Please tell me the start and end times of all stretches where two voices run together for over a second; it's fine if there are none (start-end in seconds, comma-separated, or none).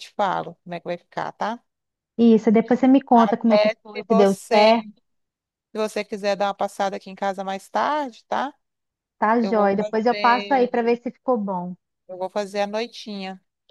3.1-4.7, 9.4-10.8